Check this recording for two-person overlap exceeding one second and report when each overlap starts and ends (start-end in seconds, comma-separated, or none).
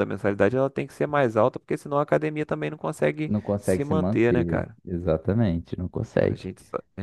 3.3-4.8